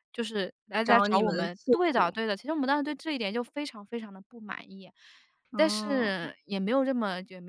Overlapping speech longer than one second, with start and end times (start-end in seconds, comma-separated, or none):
0.8-2.1